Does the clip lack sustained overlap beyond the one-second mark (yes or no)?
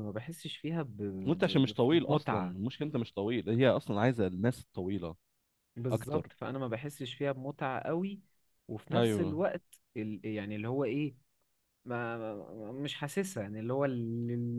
no